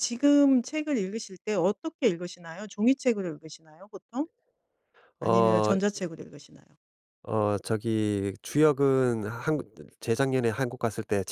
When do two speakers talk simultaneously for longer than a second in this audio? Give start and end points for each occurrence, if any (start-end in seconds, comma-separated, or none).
none